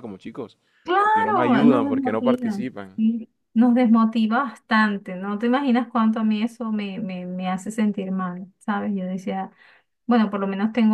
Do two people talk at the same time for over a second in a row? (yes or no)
yes